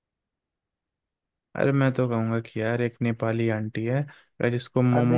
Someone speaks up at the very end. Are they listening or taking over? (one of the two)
taking over